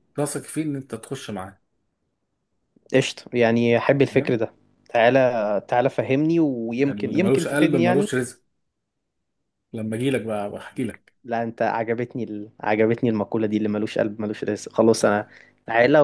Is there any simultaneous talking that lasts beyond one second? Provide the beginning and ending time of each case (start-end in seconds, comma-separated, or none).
6.8-8.1